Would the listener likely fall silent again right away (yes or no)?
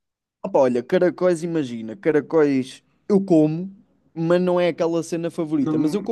yes